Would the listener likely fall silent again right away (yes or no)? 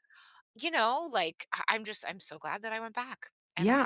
no